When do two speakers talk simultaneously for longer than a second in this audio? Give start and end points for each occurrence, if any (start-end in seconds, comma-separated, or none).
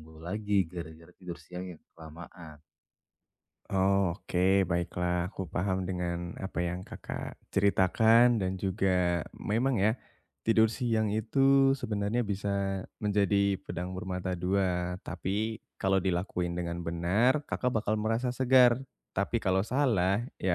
none